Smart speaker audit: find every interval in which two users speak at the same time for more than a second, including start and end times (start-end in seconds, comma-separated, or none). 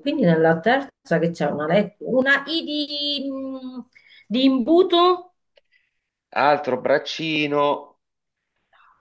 none